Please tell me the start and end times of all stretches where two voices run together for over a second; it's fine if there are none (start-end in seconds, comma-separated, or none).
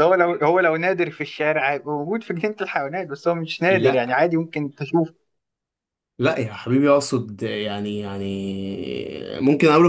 none